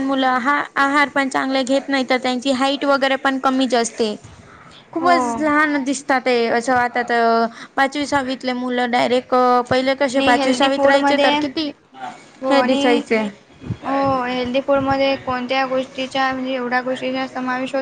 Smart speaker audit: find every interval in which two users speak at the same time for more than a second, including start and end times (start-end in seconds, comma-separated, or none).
10.1-11.3